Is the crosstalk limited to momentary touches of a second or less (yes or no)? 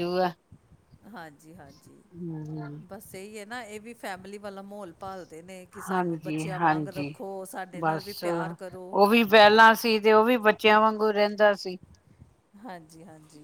no